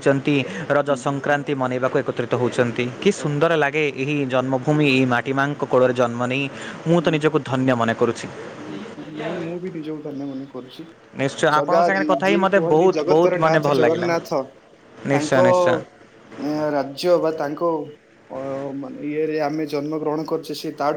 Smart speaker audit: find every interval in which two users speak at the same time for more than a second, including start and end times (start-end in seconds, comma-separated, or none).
11.6-14.3